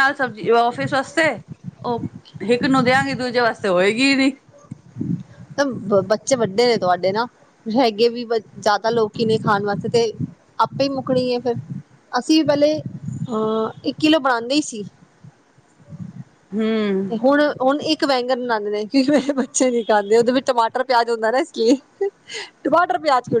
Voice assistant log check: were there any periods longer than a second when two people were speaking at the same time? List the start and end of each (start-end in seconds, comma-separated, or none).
none